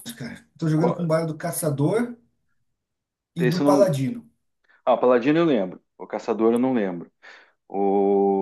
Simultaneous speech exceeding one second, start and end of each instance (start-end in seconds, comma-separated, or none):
none